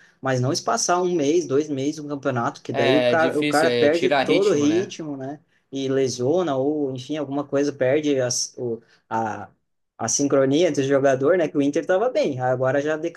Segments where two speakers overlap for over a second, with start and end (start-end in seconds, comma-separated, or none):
2.7-5.0